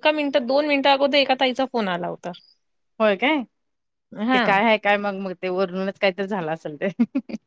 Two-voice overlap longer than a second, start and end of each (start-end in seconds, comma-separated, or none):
none